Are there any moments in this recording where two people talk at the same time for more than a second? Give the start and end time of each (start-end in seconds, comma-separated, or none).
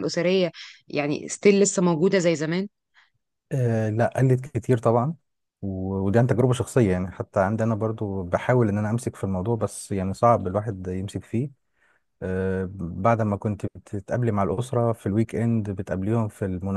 none